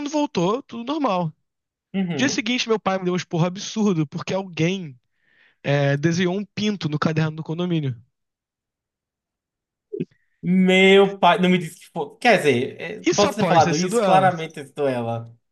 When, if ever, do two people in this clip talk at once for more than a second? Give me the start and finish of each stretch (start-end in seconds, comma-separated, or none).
13.0-14.3